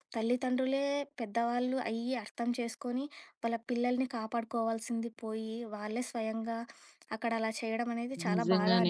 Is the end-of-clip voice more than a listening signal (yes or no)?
yes